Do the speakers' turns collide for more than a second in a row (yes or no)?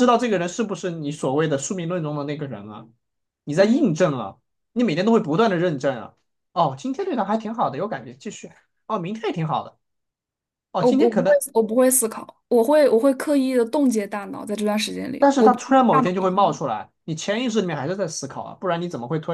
yes